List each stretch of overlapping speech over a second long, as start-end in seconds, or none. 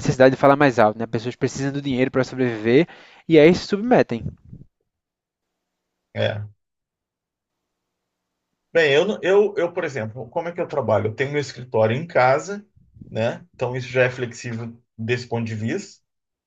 none